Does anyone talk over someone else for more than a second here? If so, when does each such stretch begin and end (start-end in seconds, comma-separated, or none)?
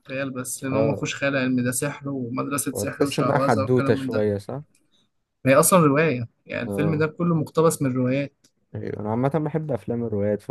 2.7-4.2